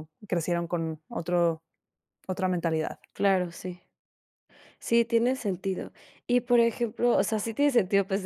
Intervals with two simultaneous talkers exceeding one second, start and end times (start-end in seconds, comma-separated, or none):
none